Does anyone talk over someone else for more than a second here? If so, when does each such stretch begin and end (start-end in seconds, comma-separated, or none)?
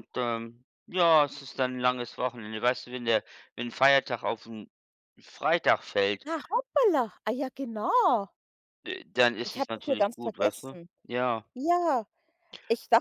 9.5-10.9